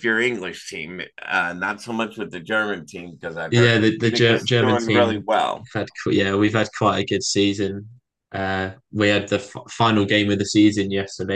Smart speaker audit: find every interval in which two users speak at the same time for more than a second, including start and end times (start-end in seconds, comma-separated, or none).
3.5-5.2